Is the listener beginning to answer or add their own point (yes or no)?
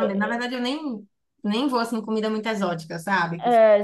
yes